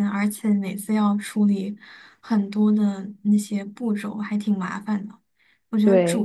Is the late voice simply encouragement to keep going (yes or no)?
yes